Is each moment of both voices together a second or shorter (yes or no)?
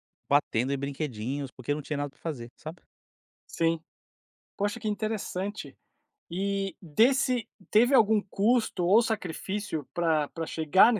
yes